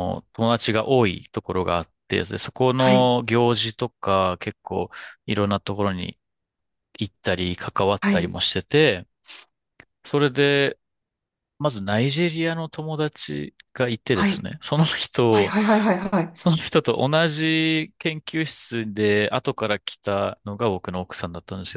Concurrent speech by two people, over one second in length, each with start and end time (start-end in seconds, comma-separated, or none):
none